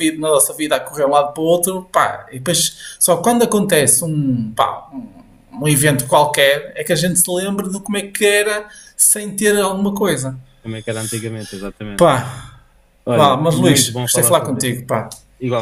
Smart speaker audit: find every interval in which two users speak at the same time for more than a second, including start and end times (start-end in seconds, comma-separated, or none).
13.1-14.7